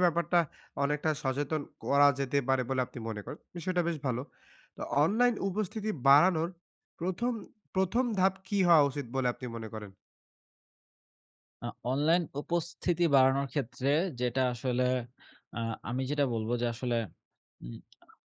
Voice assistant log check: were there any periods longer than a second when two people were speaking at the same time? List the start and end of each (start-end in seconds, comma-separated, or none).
none